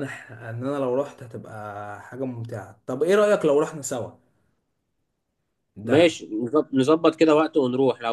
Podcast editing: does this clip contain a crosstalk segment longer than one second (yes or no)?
no